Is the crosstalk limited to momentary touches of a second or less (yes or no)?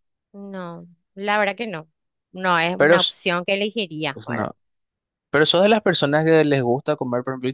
yes